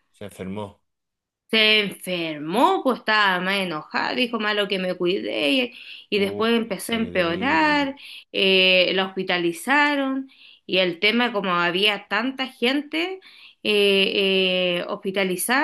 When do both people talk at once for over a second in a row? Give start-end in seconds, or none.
6.1-7.9